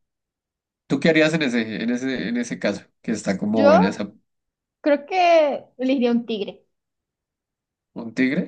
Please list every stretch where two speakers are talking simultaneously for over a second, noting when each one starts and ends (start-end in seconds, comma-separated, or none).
none